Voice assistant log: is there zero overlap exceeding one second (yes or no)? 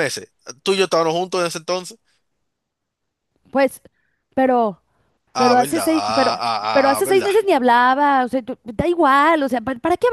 no